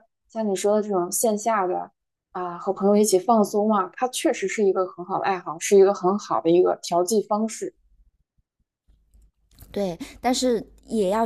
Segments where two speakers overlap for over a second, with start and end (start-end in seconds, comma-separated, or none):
none